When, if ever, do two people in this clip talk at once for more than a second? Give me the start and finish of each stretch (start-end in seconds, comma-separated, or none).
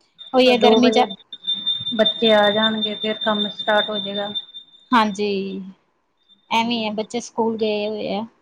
none